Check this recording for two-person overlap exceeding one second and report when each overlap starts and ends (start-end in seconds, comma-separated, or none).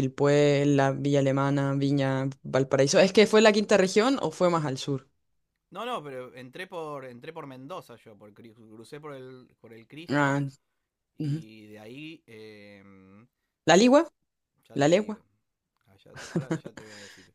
none